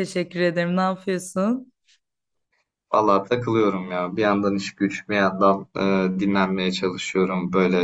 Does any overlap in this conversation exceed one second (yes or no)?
no